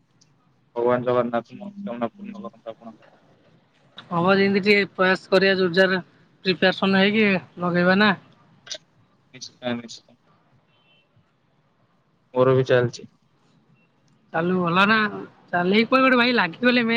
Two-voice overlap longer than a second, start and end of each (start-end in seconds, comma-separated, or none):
none